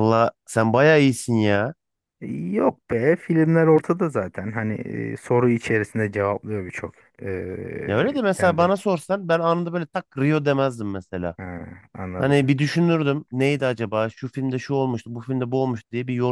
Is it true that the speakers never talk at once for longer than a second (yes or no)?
yes